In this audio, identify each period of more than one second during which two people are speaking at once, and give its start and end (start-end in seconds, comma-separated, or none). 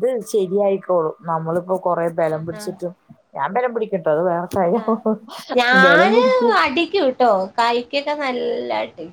none